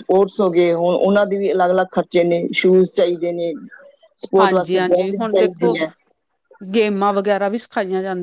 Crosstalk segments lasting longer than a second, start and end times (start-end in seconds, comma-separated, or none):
4.4-5.7